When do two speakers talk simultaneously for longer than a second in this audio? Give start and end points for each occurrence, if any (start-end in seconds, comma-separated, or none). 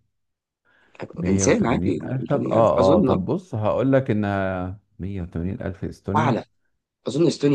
1.3-3.2